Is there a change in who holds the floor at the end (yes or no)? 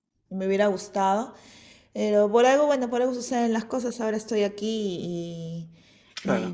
no